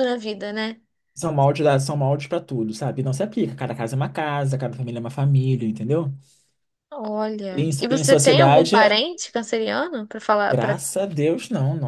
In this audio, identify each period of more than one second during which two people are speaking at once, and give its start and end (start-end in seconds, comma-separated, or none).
7.5-8.8